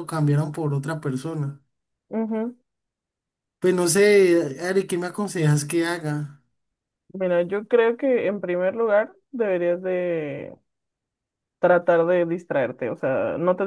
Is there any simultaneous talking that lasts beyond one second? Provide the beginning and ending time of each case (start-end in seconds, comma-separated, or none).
none